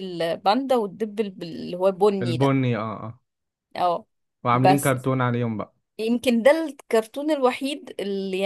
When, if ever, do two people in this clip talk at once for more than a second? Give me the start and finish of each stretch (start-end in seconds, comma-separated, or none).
none